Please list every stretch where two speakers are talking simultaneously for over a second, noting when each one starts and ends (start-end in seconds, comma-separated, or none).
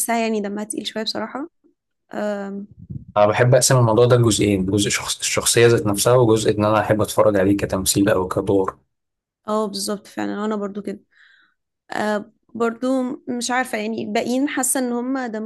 none